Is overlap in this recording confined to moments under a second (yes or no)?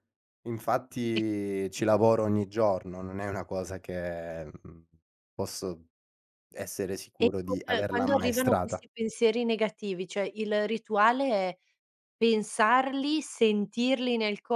no